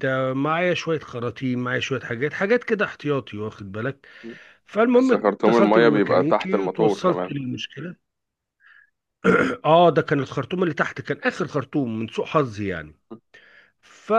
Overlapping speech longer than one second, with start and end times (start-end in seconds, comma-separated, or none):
4.9-7.4